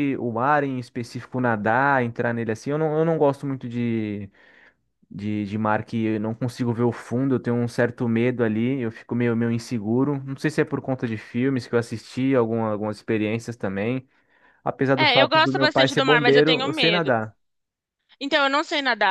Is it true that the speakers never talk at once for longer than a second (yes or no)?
no